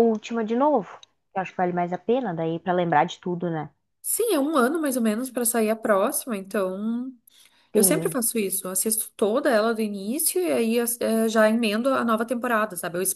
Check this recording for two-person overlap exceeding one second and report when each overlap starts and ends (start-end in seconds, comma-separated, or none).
none